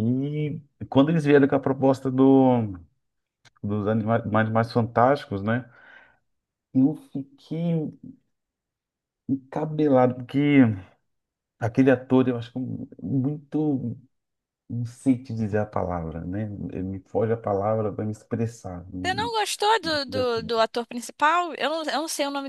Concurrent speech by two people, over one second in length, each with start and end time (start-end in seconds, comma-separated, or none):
none